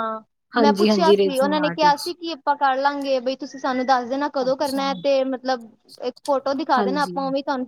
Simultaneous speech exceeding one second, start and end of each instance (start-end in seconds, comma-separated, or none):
0.6-2.0